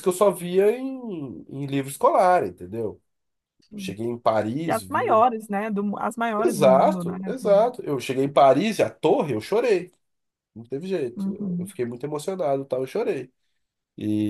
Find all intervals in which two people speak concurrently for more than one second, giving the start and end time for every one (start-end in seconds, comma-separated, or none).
6.4-7.7